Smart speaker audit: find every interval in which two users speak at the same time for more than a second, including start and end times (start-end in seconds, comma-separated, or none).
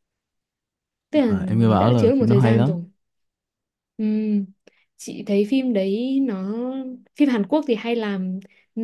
1.1-2.8